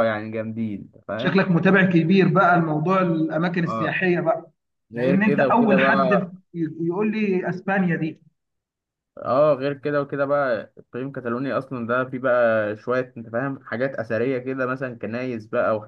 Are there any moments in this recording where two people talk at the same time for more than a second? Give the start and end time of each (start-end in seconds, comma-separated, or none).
4.9-6.3